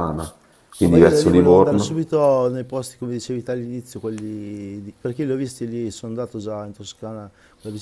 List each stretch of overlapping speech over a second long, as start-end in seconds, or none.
0.8-2.0